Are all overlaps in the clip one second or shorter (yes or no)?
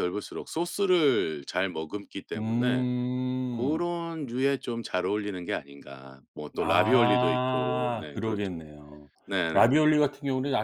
no